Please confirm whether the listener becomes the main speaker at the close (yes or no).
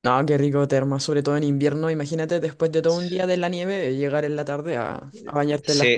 yes